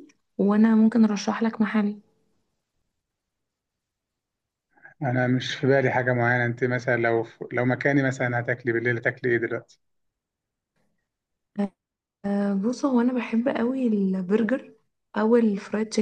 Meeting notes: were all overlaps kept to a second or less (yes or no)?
yes